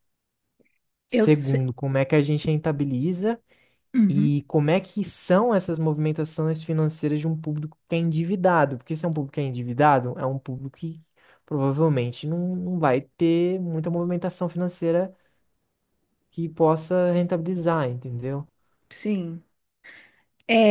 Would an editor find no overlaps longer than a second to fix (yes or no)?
yes